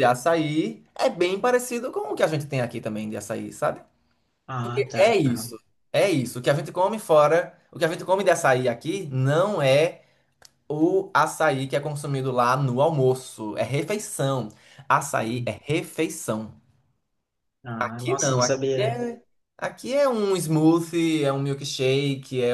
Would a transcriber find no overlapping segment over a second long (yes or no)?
no